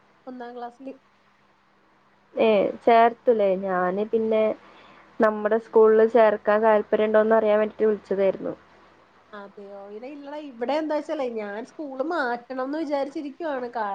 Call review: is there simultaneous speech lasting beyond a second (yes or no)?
no